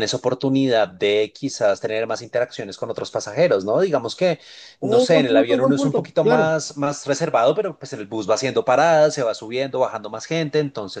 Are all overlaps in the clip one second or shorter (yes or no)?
no